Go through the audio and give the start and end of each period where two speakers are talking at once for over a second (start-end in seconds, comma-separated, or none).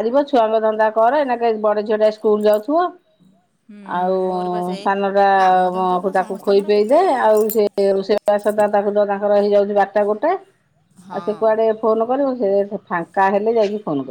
5.4-7.6